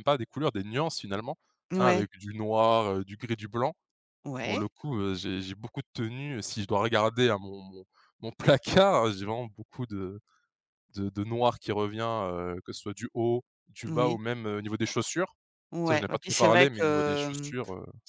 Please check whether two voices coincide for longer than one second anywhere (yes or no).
yes